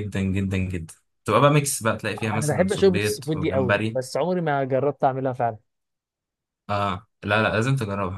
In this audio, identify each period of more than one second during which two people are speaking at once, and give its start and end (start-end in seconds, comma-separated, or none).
2.3-4.0